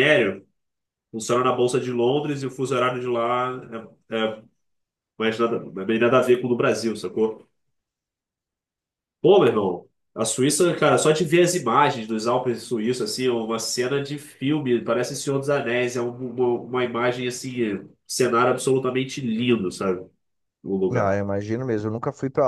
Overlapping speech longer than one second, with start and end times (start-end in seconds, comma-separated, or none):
none